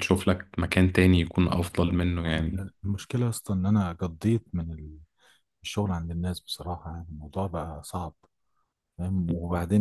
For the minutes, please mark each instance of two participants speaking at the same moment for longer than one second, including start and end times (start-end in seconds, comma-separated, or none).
none